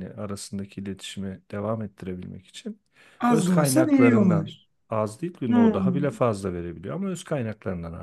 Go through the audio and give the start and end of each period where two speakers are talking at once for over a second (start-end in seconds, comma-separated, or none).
3.3-4.5